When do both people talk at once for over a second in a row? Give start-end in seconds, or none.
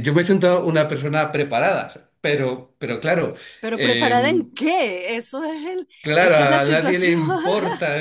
6.0-7.3